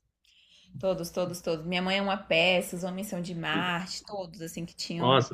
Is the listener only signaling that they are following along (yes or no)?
no